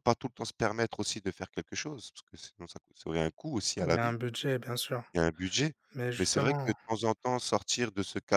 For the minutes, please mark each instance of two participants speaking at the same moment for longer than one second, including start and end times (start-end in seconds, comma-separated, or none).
none